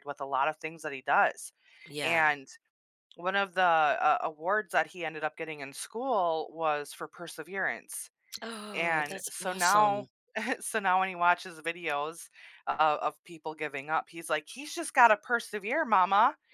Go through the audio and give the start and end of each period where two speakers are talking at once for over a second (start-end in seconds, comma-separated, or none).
8.7-10.1